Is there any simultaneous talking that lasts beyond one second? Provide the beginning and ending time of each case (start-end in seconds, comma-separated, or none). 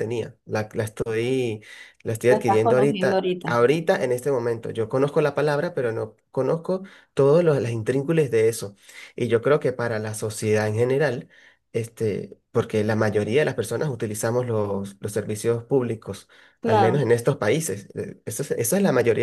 2.3-3.5